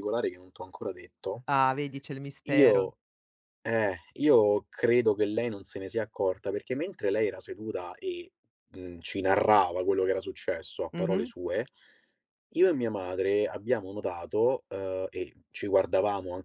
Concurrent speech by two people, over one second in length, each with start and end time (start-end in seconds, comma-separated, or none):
none